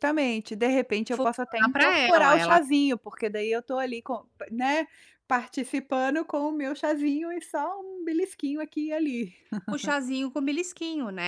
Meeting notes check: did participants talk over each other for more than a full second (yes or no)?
yes